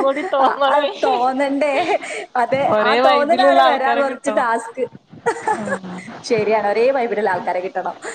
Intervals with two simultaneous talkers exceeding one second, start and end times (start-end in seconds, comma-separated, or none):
2.8-4.5